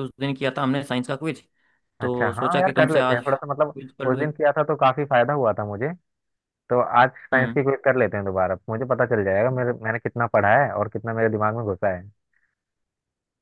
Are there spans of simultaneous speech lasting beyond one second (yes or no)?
yes